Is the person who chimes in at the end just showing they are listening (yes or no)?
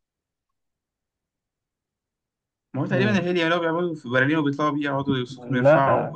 no